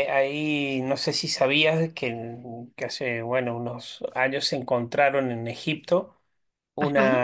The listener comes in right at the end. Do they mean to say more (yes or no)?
no